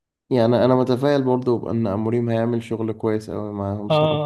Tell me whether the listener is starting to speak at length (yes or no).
yes